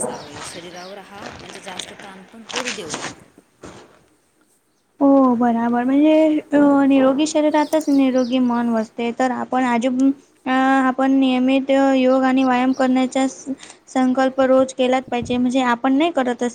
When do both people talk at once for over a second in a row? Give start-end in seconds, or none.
none